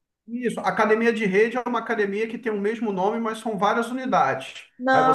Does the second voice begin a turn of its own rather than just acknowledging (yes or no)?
no